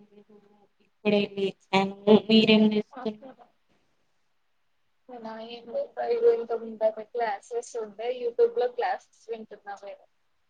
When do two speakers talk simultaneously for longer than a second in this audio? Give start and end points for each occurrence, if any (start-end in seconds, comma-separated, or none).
none